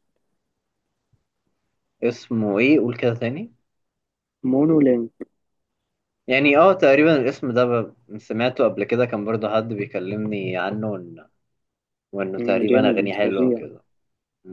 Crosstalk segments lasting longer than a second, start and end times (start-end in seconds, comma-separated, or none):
12.4-13.6